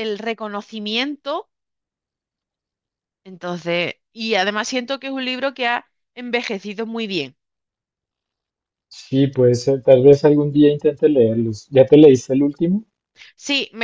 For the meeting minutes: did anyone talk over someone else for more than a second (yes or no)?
no